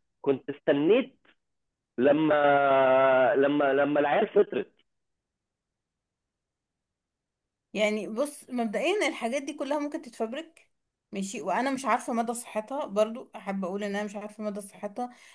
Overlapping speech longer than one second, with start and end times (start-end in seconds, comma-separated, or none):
none